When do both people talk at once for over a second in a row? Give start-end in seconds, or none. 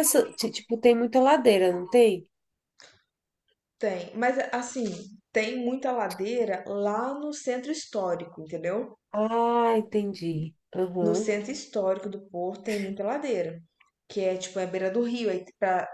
none